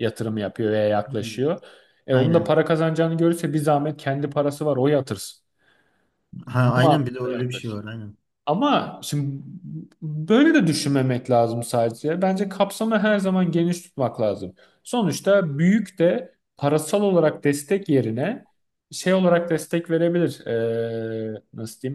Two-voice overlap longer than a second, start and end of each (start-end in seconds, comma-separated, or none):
6.5-7.8